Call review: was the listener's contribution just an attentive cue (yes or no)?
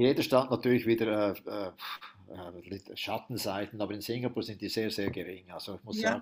yes